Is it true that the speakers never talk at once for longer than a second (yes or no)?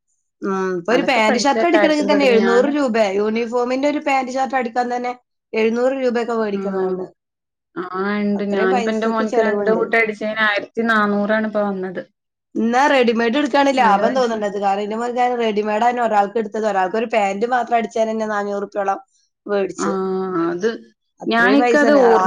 no